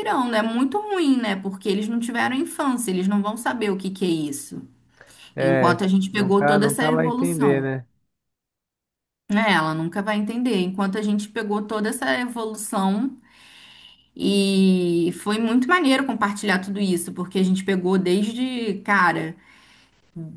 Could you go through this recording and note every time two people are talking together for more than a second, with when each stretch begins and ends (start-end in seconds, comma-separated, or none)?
5.4-7.7